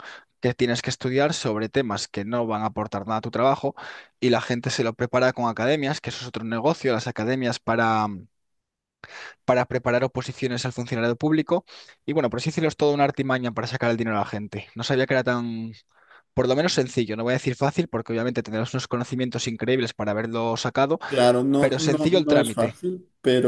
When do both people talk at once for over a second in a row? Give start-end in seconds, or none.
21.6-22.8